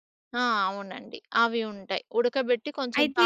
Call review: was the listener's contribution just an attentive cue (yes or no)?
yes